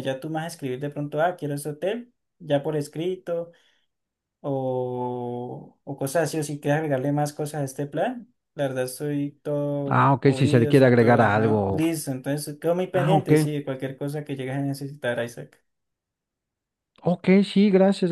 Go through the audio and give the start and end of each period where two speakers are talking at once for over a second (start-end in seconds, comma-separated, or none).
9.9-11.8